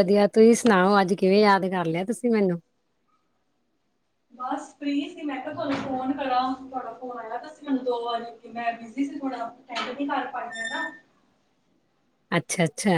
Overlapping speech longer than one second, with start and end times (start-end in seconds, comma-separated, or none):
none